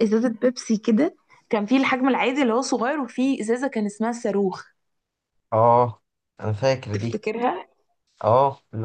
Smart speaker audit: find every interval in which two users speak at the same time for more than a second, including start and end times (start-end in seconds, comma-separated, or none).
none